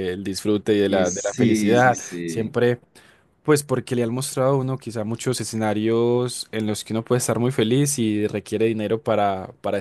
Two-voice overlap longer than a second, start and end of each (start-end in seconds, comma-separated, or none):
0.9-2.5